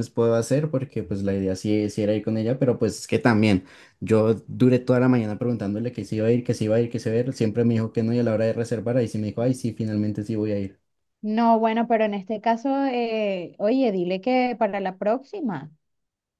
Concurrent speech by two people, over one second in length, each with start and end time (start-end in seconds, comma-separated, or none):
none